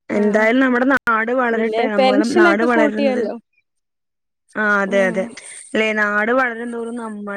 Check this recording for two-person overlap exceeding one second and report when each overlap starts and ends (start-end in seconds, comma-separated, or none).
1.6-3.2